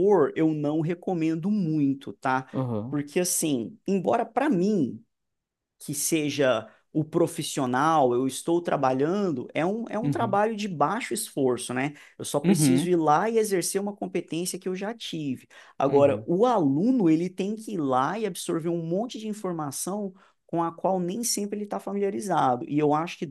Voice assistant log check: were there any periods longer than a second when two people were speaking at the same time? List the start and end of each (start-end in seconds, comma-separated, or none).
none